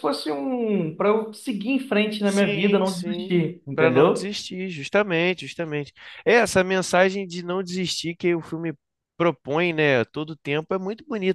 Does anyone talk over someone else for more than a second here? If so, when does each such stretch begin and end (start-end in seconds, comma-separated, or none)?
2.2-4.3